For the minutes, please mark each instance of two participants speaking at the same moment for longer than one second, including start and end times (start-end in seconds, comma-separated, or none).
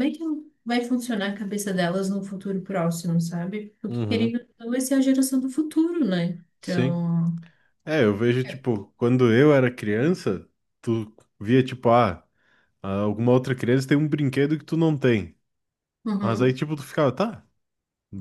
none